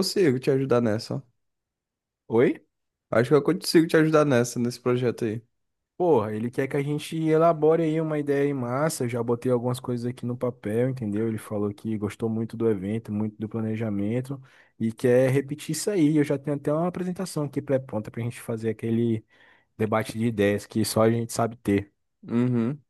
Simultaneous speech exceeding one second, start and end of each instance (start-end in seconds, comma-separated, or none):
none